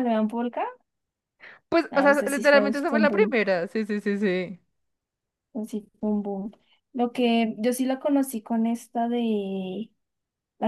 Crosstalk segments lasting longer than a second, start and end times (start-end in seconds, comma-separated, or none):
1.9-3.4